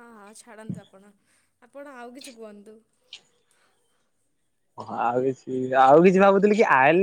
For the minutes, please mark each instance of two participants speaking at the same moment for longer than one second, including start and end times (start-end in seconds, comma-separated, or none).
none